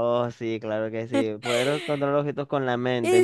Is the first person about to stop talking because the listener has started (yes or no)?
yes